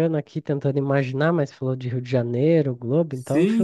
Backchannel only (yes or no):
no